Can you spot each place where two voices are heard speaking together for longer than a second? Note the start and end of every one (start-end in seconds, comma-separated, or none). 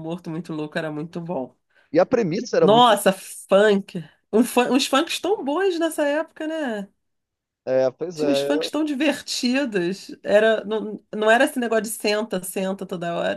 none